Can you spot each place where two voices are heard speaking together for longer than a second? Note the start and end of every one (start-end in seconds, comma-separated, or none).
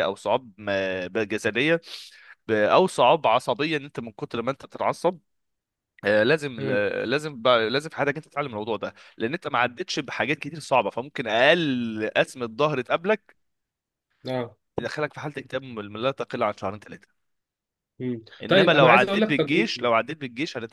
18.4-19.9